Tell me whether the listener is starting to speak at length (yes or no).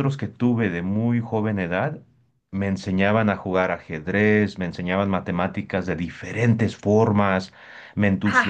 no